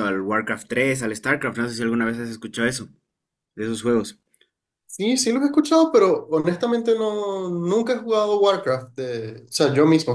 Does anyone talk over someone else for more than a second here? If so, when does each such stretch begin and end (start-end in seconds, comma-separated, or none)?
none